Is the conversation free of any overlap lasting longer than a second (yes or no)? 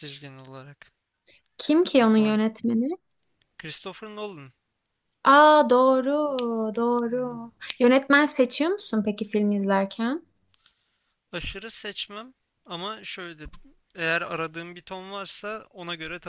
yes